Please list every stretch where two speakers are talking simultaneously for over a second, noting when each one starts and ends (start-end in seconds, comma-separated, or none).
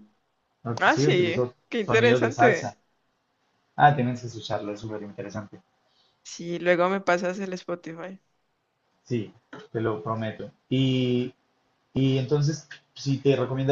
0.8-2.8